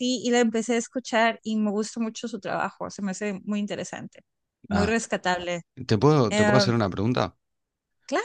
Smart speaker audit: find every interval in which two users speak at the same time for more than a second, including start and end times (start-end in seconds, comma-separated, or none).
none